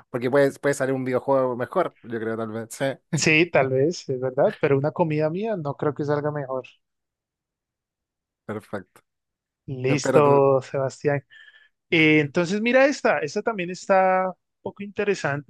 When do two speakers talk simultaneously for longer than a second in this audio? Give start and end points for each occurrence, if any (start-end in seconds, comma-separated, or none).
none